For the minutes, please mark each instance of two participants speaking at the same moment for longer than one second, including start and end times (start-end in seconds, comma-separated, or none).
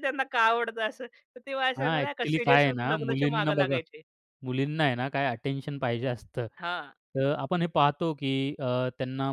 1.8-3.8